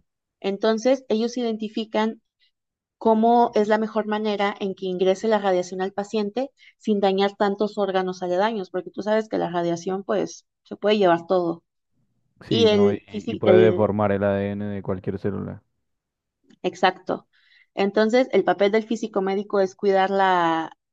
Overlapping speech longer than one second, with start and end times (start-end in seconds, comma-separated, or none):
12.5-13.9